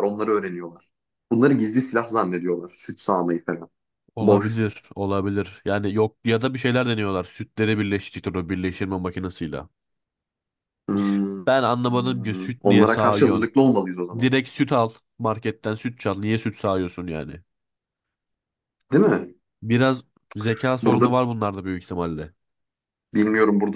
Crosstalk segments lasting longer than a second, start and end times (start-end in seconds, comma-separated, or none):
11.9-13.5